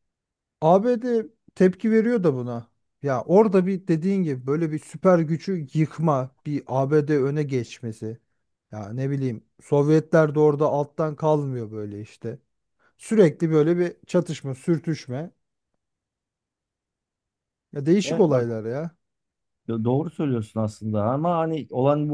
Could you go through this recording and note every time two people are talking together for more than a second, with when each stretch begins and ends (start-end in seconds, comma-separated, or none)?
none